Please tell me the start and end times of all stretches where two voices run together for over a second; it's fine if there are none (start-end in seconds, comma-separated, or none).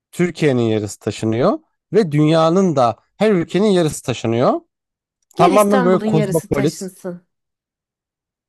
5.4-6.9